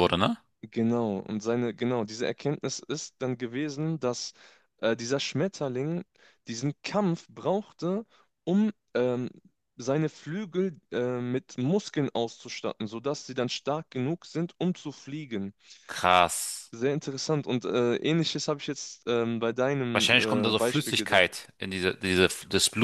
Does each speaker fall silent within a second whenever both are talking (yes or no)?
no